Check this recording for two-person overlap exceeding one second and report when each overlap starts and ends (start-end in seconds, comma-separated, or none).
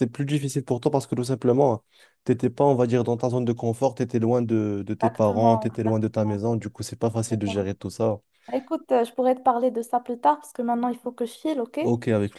5.0-6.4